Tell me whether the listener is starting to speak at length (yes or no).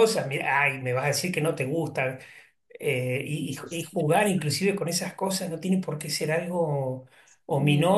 no